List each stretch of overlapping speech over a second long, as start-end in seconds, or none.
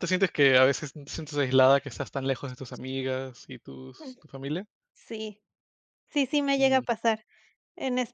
none